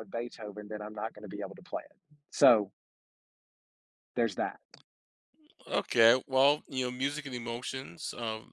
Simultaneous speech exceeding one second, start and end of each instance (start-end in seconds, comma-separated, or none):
none